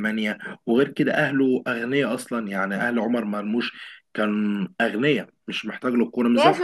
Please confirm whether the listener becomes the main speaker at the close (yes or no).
yes